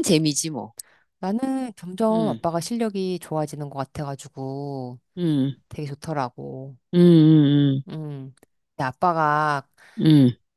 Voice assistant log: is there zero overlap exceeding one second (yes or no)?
yes